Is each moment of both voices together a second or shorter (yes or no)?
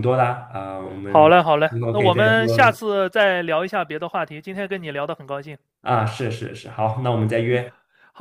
no